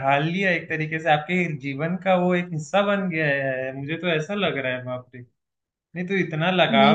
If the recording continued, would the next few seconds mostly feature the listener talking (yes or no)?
no